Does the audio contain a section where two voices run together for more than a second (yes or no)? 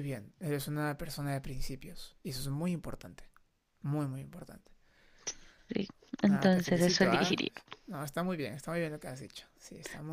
yes